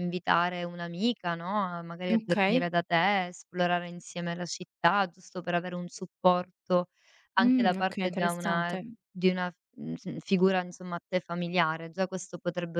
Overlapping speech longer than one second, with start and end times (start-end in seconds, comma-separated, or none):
7.4-8.9